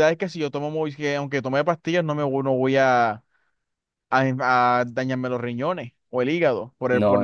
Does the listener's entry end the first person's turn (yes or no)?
yes